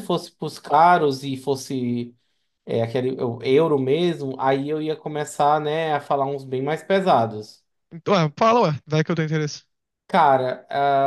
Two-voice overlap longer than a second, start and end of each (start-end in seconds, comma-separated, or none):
none